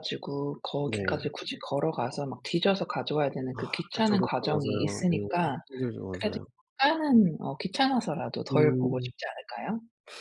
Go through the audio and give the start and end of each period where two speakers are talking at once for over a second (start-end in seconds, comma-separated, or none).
3.5-5.3